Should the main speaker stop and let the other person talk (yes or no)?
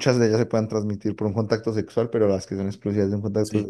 no